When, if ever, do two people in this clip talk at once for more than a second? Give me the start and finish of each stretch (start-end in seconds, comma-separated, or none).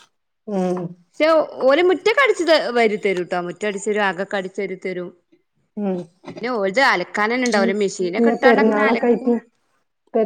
7.8-9.3